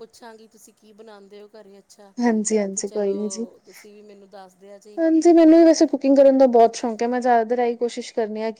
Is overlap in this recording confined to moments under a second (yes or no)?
yes